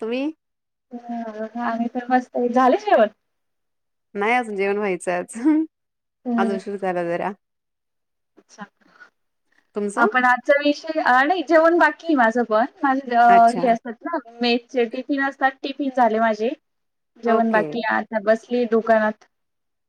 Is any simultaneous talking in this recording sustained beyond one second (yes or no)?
no